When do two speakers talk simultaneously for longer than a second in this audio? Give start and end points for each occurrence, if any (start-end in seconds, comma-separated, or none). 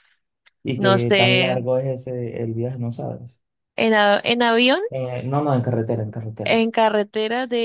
none